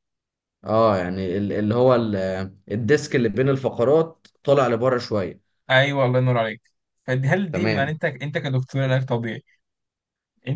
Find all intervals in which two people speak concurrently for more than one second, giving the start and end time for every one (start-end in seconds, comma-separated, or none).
none